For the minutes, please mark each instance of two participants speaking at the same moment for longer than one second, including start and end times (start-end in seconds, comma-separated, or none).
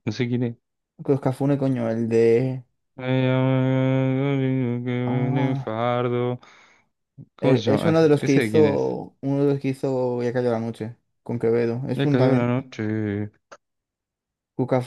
7.4-8.9